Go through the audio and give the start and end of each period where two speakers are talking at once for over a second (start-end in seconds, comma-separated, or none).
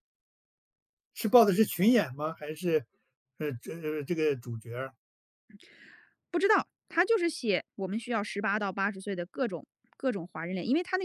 none